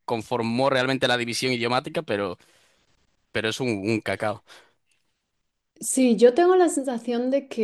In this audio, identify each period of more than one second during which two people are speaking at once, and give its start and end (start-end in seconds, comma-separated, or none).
none